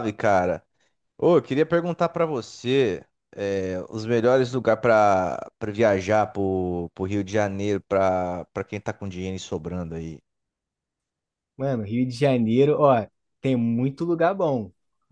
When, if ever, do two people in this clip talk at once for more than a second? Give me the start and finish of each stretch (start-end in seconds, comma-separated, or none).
none